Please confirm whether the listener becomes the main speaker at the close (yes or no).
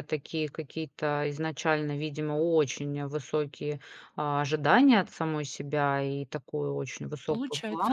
no